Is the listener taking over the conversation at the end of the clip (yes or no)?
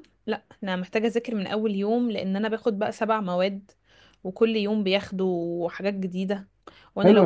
yes